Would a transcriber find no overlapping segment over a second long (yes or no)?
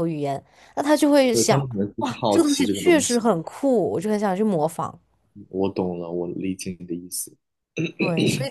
no